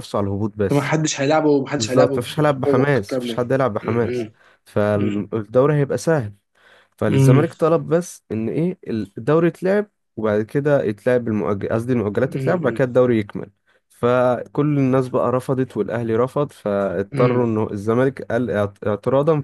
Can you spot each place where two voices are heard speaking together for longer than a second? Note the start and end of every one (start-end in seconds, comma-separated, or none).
1.8-4.3